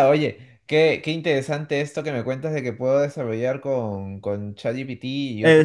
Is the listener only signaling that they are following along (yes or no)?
no